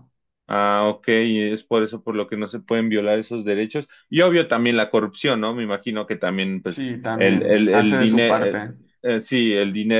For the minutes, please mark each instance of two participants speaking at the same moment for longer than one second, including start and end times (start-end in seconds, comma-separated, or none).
6.6-8.6